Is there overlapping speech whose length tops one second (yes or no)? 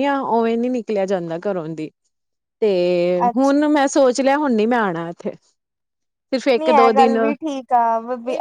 no